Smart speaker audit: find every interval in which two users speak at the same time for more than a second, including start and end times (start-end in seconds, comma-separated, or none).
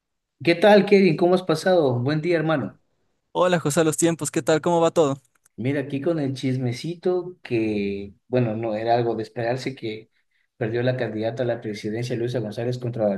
none